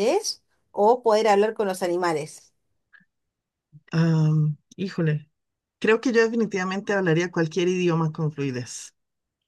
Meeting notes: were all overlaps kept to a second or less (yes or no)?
yes